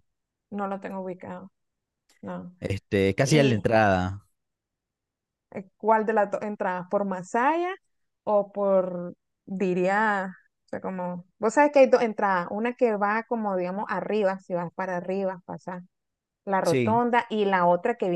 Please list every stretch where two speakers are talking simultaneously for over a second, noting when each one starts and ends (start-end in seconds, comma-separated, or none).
none